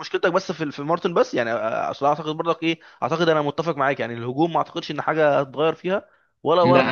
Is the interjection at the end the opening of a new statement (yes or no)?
yes